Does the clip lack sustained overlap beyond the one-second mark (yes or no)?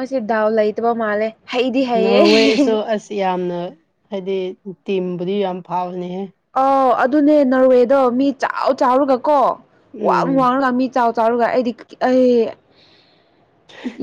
yes